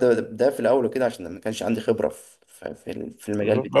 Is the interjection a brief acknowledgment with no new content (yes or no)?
no